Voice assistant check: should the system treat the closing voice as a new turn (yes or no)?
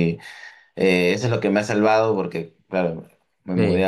no